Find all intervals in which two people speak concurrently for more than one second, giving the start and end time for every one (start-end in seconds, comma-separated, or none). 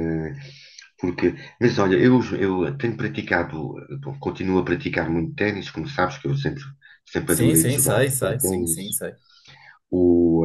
7.3-8.8